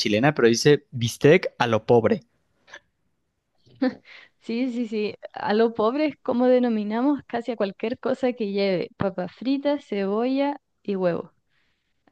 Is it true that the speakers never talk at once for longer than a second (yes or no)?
yes